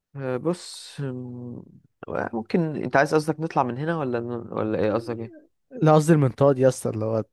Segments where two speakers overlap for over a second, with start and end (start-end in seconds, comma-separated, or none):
none